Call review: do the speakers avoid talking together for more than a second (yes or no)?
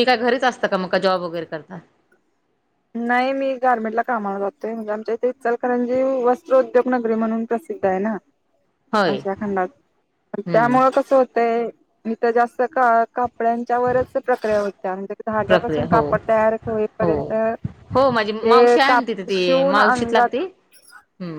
no